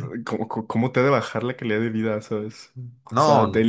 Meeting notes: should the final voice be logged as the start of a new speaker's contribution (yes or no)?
no